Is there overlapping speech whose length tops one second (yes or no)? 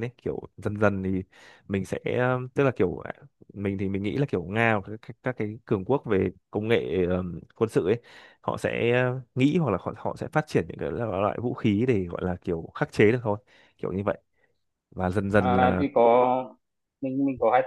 no